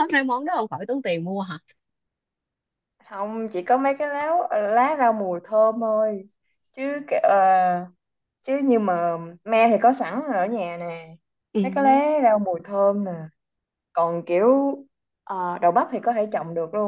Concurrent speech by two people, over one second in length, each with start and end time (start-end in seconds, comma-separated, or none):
none